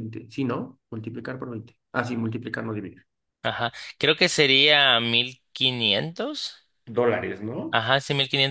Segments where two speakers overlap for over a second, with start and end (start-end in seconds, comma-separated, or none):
none